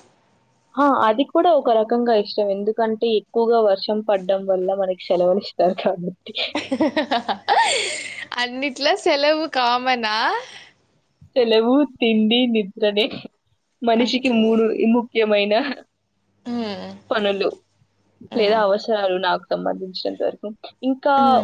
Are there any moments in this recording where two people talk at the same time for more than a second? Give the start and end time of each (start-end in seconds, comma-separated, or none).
none